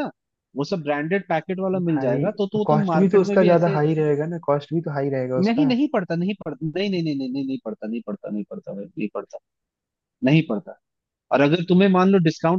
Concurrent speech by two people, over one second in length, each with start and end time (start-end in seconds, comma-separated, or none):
1.8-3.8